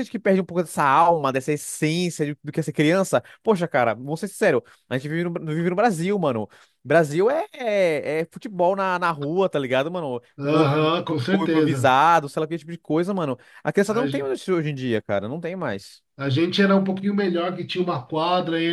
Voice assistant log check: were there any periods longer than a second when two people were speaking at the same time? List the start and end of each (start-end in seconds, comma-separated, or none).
10.4-11.9